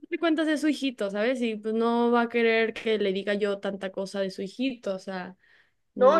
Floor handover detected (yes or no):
yes